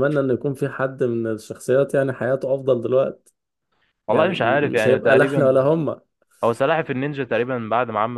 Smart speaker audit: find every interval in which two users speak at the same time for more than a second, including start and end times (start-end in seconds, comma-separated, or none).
4.1-5.5